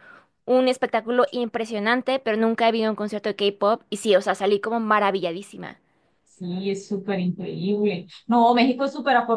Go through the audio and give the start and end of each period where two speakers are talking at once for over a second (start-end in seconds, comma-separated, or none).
none